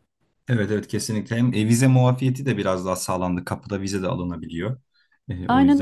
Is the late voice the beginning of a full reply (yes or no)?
yes